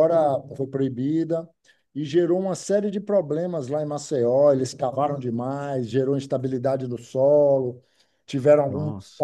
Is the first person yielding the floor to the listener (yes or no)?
no